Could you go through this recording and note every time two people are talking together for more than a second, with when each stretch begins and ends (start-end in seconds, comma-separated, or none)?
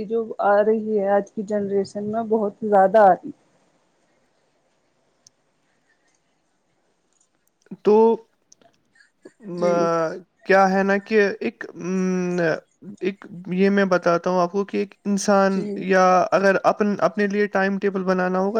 none